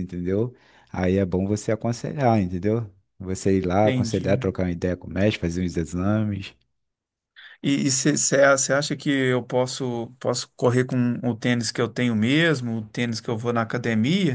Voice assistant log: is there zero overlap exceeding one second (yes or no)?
yes